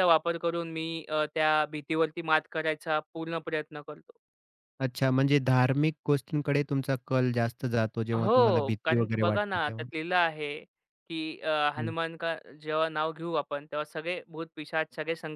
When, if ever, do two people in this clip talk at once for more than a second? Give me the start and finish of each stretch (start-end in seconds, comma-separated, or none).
8.2-9.8